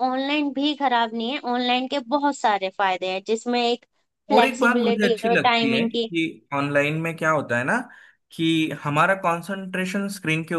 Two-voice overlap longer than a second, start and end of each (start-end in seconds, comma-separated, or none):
4.3-6.1